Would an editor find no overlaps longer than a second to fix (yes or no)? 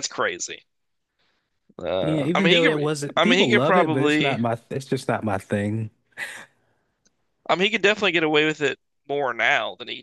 no